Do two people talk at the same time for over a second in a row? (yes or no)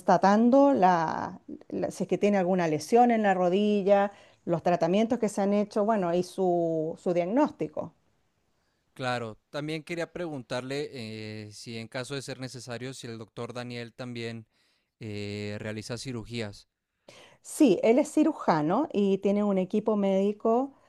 no